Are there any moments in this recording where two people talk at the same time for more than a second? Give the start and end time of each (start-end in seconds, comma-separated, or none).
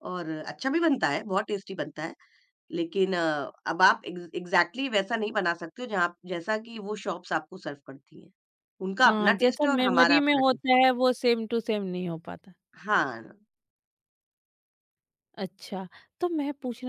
9.1-10.8